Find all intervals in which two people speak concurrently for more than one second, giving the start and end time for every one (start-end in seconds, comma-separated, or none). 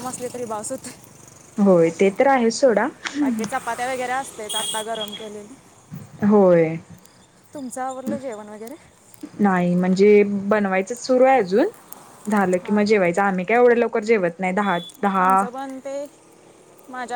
none